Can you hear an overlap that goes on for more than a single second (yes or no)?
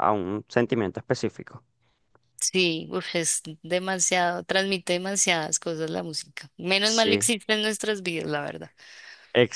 no